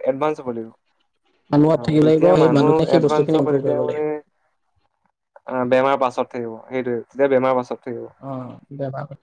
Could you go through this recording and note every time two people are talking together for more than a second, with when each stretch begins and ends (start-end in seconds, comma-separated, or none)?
1.8-4.0